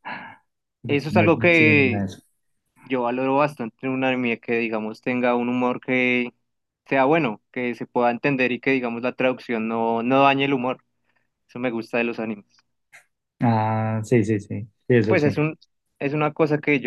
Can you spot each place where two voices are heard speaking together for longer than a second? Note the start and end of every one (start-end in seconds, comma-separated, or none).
0.9-2.1